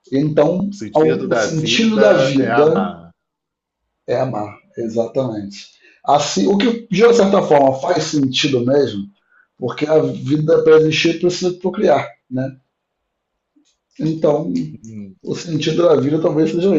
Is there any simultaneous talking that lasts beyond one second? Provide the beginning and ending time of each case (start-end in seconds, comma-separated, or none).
0.7-2.9